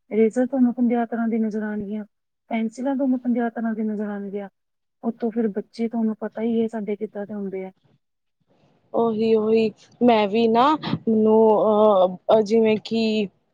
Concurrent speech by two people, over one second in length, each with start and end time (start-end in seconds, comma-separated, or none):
none